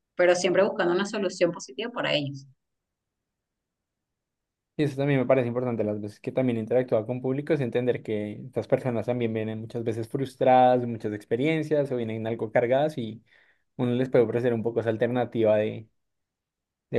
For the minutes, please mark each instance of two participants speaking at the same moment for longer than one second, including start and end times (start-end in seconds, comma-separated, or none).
none